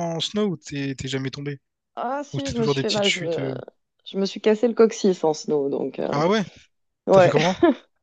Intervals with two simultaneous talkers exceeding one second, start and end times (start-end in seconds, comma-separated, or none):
2.3-3.5